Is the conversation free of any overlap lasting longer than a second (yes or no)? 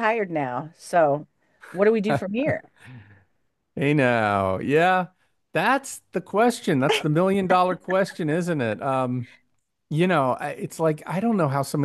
yes